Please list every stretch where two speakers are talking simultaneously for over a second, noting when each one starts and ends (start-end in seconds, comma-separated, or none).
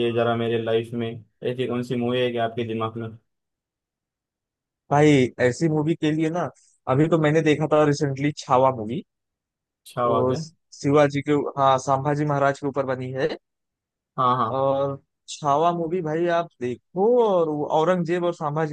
none